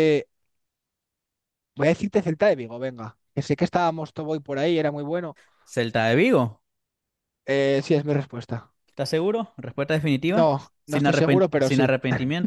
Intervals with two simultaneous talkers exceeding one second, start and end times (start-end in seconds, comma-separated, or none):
10.3-12.0